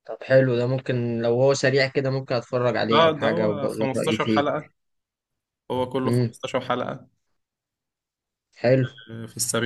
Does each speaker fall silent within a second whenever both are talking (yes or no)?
no